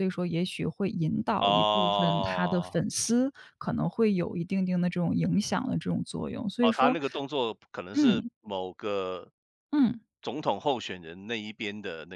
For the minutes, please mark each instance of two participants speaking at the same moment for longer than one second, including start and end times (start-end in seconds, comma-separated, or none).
1.4-2.8